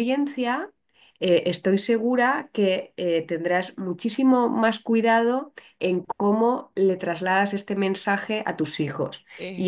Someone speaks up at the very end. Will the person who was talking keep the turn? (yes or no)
yes